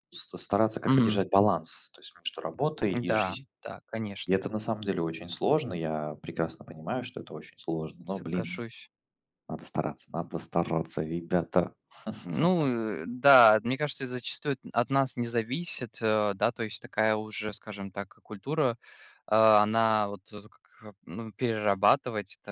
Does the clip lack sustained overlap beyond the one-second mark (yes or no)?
yes